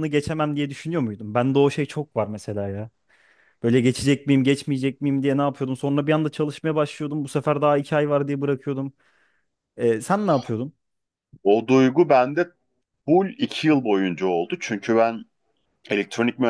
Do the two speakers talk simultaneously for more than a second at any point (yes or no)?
no